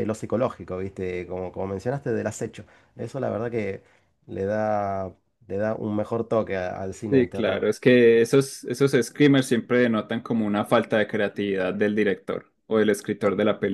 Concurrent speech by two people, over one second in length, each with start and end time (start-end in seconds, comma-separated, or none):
none